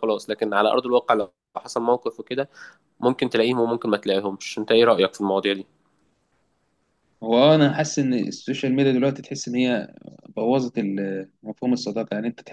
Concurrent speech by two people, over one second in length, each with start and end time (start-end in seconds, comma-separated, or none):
none